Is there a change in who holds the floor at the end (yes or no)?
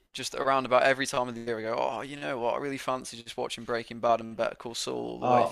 yes